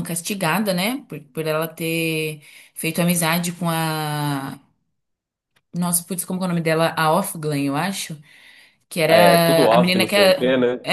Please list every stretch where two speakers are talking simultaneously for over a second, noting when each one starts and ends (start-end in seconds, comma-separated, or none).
9.1-10.4